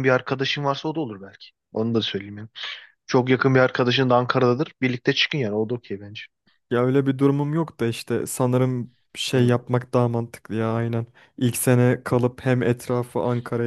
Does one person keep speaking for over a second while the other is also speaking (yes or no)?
no